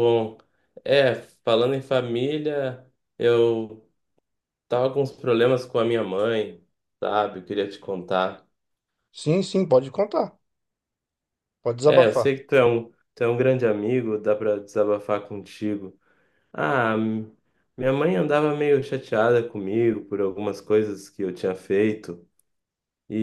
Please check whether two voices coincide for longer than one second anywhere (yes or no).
no